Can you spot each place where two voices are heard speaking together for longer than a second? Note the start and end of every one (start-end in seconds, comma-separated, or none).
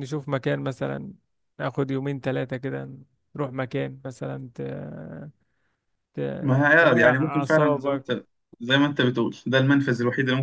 6.4-8.1